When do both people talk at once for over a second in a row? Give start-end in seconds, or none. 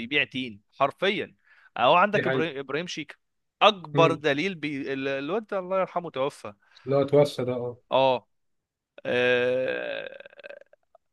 none